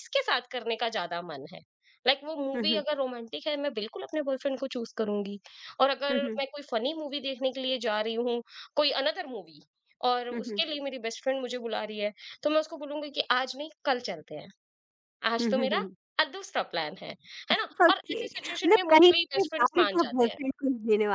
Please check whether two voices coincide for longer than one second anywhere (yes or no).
yes